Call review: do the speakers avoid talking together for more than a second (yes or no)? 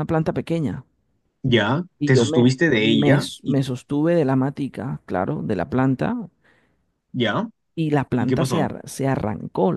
no